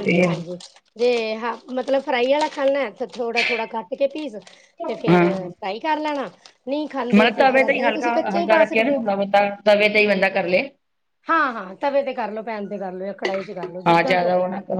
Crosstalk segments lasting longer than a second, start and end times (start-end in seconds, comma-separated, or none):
none